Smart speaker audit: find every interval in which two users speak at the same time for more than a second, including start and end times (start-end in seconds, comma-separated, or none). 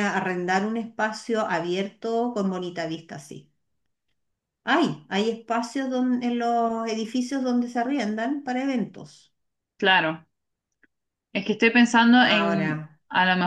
none